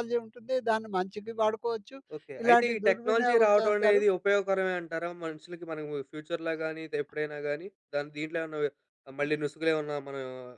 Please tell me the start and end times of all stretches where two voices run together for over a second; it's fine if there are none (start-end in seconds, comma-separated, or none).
2.4-4.0